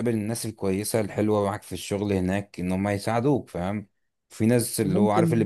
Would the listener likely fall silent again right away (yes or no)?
yes